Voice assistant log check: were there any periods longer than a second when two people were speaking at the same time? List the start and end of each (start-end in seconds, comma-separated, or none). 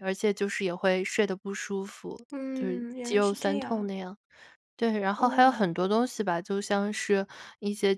2.3-3.9